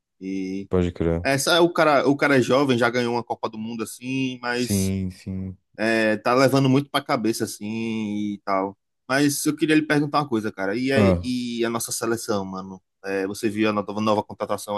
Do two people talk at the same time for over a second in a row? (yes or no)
no